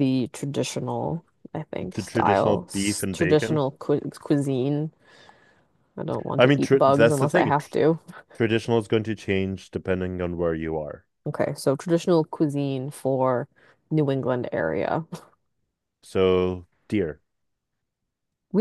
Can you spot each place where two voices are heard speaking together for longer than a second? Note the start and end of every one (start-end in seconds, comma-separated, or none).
1.8-3.6, 6.4-7.7